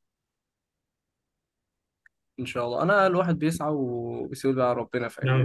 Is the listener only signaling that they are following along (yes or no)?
no